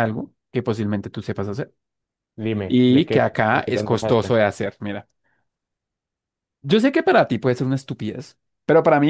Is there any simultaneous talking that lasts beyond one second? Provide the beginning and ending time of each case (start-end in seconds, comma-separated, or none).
2.7-4.3